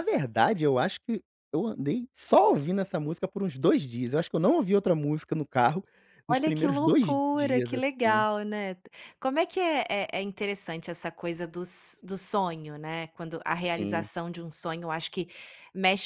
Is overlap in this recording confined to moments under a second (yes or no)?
no